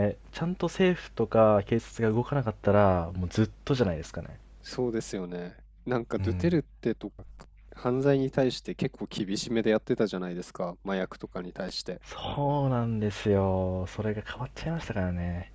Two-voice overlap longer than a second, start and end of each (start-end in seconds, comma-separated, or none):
none